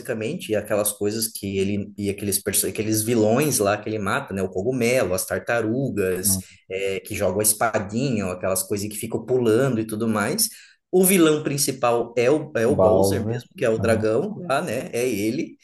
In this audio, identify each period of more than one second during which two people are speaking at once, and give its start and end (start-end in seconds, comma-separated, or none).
12.7-14.1